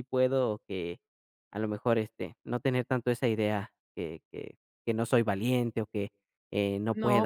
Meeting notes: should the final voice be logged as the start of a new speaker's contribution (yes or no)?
yes